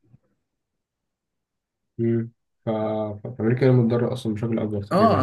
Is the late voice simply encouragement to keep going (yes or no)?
no